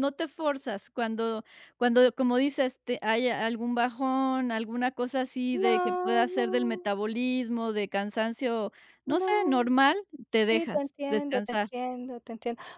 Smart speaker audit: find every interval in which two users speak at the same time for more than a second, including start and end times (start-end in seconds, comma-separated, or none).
5.6-6.9, 10.4-11.7